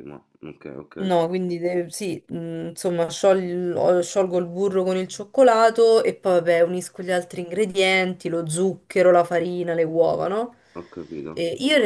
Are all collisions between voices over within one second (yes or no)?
yes